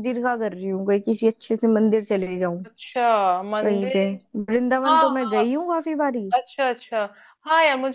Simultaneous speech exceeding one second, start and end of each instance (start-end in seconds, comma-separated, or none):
none